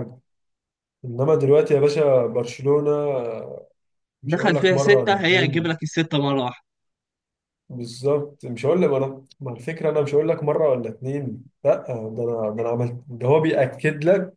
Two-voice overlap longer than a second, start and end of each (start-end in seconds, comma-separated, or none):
4.3-5.8